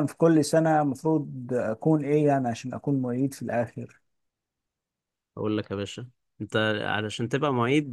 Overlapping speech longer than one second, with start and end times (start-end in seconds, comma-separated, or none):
none